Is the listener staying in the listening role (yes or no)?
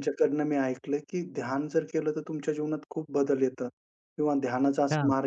yes